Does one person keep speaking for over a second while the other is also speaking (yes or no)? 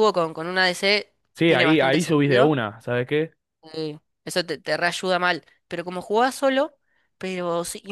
yes